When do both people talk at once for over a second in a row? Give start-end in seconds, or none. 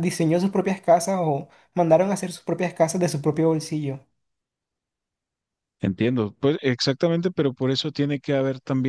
none